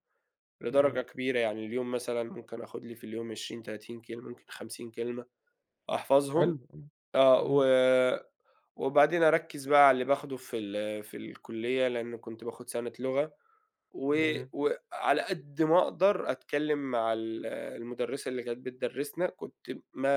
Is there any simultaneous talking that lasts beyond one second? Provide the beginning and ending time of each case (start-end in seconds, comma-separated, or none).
none